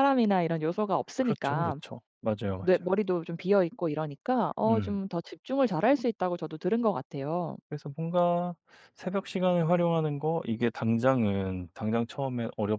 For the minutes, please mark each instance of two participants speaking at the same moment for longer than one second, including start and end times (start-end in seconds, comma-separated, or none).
none